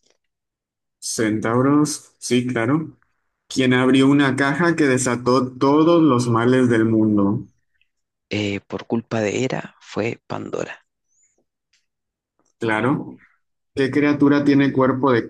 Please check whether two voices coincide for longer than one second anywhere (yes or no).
no